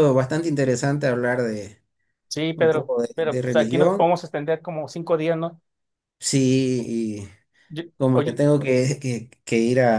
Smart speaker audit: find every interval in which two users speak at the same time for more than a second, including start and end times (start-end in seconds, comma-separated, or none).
2.5-4.1